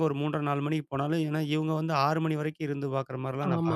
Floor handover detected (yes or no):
yes